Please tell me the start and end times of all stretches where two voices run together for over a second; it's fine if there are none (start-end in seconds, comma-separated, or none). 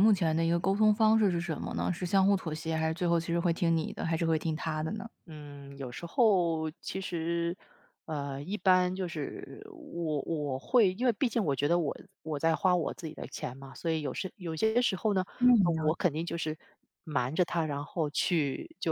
none